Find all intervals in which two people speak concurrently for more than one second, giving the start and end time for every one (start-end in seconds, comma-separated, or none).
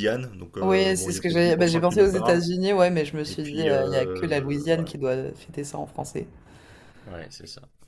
0.6-2.4, 3.2-4.9